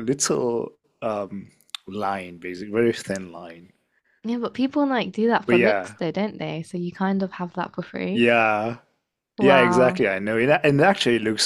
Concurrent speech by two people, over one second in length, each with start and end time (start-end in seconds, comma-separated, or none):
none